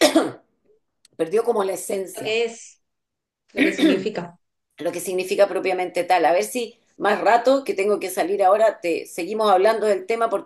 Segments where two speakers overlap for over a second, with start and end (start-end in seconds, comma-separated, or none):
none